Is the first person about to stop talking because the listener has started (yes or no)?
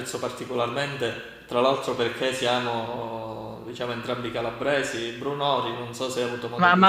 yes